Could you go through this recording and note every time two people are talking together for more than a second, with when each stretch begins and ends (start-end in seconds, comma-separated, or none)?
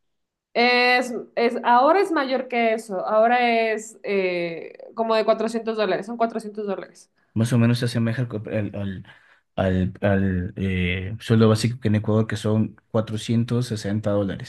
none